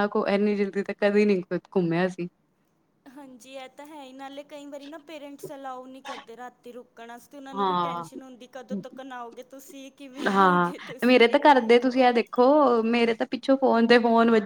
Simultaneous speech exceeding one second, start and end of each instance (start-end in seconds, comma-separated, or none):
10.3-12.0